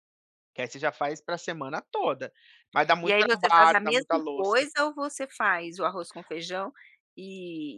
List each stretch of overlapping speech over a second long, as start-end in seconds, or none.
3.0-4.5